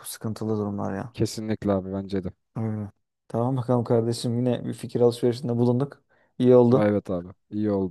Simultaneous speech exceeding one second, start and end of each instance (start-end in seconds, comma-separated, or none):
none